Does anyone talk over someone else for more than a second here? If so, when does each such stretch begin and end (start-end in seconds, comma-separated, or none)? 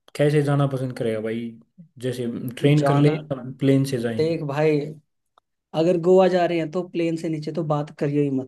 none